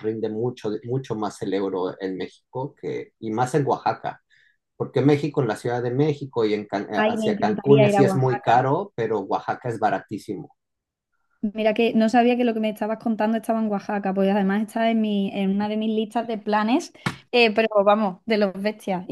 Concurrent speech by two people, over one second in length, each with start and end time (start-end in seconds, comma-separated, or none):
7.0-8.7